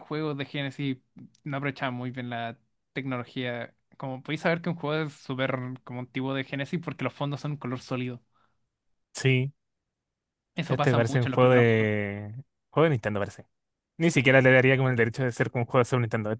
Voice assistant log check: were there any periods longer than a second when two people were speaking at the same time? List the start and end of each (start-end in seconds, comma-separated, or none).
10.7-11.9